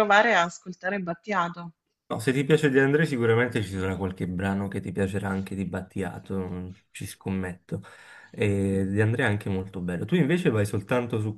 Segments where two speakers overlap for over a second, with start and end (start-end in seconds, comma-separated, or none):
none